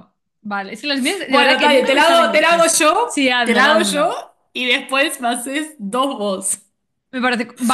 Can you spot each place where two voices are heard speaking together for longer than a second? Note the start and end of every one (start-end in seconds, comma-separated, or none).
1.3-4.2